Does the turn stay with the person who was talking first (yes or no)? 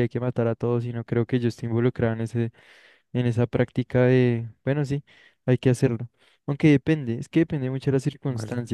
yes